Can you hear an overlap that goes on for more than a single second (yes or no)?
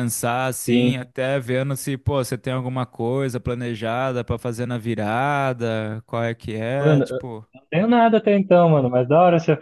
no